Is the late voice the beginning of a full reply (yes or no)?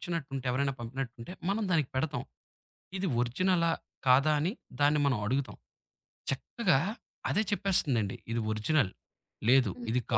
yes